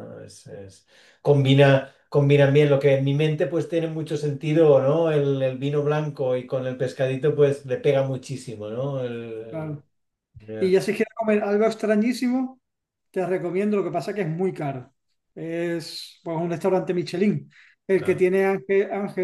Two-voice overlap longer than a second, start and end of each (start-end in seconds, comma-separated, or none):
none